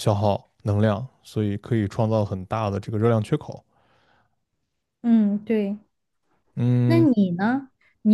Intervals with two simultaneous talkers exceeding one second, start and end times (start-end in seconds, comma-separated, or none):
none